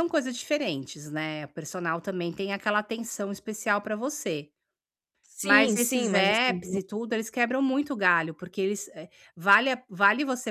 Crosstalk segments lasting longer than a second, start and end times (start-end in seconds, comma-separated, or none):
5.4-6.8